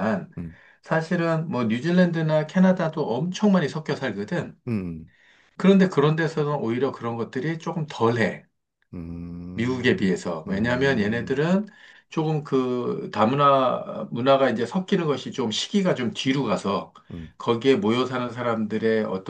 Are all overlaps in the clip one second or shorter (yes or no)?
no